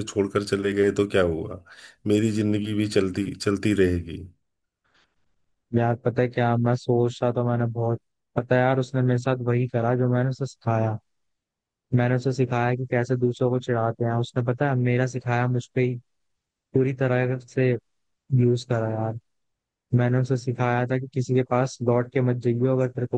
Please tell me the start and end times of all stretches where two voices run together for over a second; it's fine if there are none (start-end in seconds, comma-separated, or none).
none